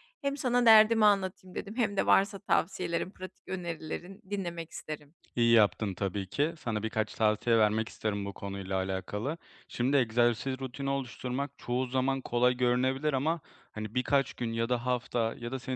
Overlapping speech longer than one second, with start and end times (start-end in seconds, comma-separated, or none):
none